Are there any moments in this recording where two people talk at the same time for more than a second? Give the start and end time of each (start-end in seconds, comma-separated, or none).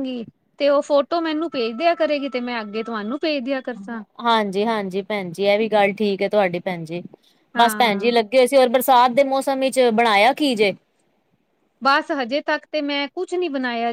none